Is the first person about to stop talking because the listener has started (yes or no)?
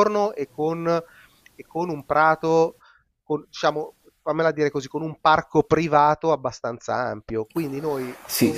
yes